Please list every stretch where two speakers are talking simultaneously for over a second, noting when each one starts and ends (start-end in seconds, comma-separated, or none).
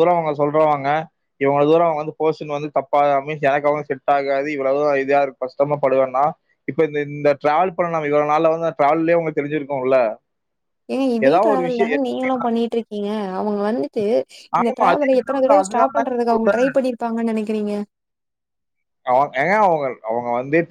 14.6-16.4